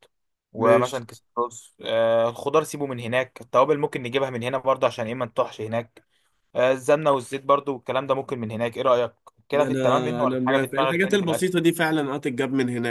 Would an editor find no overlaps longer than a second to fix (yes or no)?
no